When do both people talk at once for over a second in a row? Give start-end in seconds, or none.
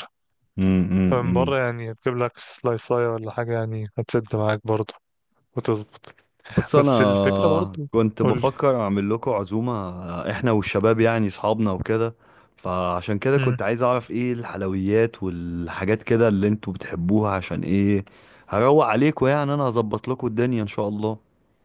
6.8-8.4